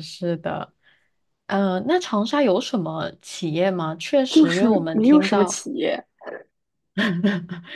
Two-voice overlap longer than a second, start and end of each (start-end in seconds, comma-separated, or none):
4.3-5.6